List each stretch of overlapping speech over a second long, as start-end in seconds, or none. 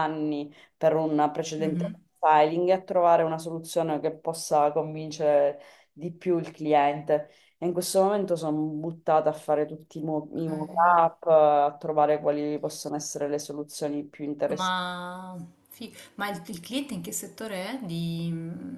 none